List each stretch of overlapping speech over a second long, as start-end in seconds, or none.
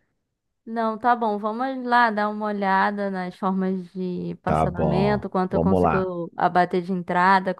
4.4-6.1